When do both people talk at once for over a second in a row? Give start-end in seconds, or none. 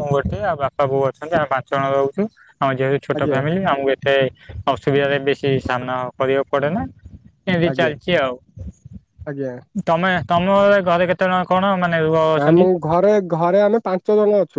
none